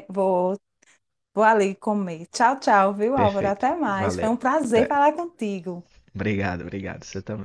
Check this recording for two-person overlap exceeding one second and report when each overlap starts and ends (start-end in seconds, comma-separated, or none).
3.2-5.0